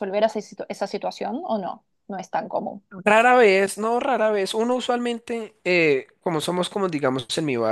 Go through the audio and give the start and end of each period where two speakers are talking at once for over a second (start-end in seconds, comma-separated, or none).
none